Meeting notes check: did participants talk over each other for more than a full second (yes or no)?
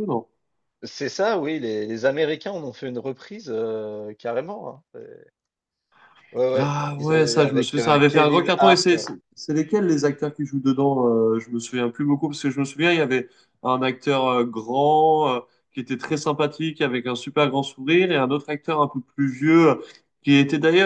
yes